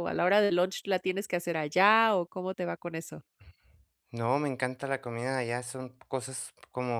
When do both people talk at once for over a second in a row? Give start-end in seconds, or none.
none